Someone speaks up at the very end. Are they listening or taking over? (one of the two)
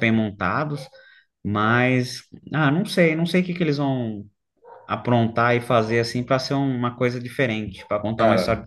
taking over